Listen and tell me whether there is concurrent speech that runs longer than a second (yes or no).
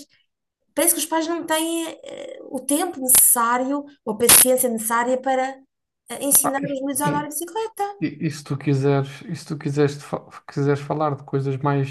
no